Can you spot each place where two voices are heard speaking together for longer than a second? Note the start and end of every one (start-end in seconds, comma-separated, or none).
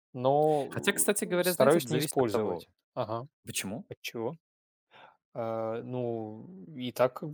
0.7-2.7